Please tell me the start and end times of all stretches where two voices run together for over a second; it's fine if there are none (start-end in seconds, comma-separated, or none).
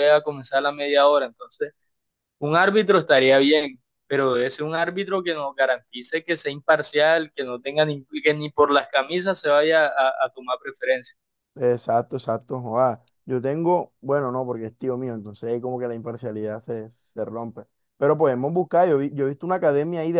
none